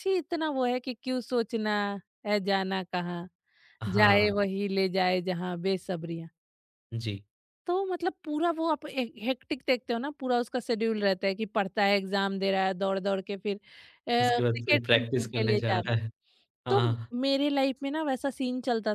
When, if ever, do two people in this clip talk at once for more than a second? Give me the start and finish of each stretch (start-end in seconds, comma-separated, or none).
14.4-15.9